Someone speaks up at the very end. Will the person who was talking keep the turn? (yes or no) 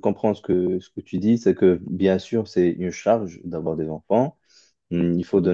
yes